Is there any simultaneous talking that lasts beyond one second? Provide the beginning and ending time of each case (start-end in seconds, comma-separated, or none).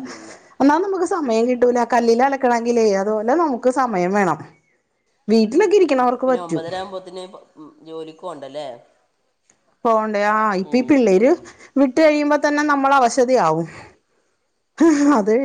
none